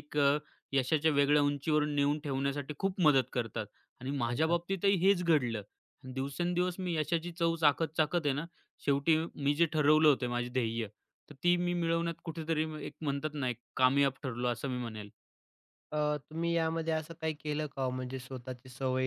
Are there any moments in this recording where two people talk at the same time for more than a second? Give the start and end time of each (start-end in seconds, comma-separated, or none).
none